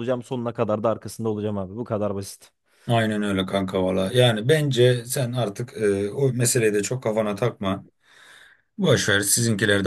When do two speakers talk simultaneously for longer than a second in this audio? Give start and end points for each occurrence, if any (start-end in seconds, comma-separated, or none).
none